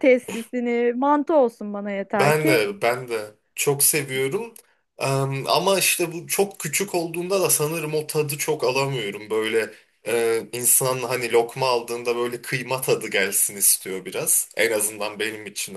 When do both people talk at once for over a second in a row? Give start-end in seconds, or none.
none